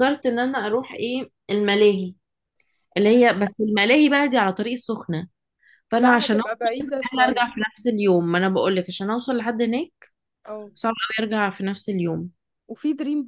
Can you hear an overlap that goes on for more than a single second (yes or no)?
yes